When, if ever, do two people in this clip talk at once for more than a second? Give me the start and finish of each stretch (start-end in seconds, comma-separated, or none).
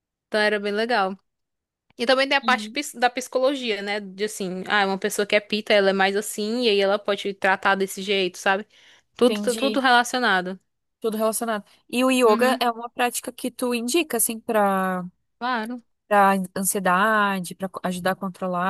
none